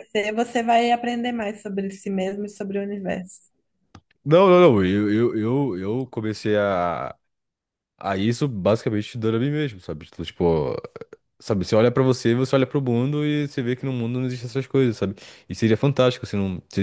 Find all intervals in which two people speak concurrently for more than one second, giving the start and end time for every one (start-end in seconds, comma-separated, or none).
none